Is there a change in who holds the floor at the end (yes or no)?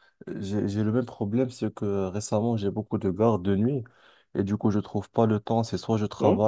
no